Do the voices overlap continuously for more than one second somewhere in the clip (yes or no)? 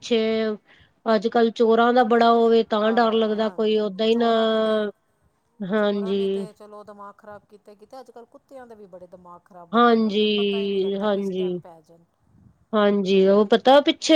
yes